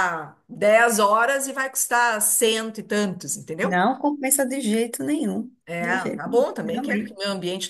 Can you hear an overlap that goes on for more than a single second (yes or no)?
yes